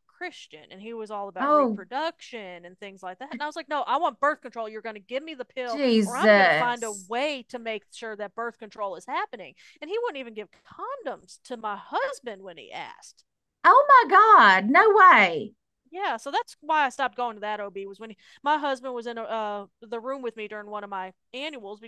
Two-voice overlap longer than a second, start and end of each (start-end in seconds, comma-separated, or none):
5.7-7.1